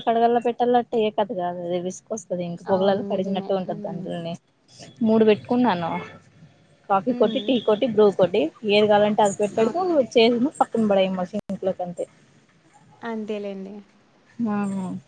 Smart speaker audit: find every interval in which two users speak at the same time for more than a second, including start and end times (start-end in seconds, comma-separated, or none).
2.7-4.1